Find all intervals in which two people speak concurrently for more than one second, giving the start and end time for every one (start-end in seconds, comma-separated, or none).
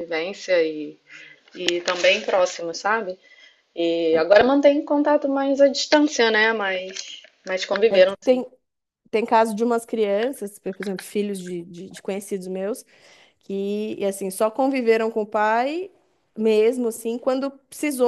none